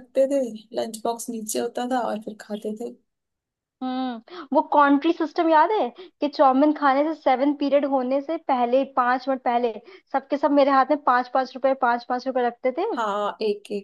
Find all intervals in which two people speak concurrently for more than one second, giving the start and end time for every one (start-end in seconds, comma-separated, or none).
none